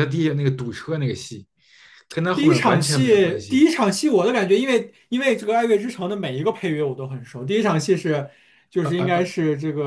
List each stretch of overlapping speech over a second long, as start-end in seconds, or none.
2.3-3.6